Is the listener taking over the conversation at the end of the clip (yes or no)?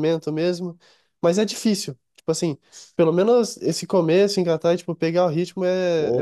yes